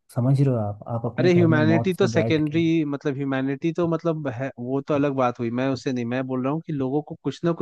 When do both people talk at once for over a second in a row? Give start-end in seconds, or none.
1.2-2.6